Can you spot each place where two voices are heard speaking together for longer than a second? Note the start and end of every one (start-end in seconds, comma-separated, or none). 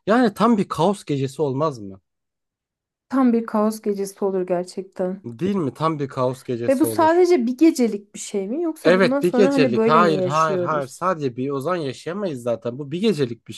8.8-11.0